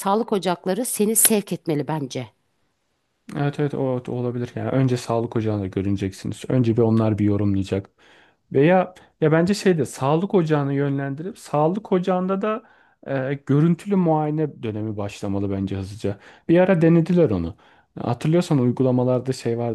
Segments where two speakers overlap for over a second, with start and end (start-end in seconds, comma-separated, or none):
none